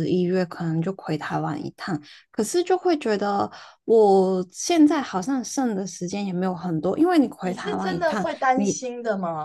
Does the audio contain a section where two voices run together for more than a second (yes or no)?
yes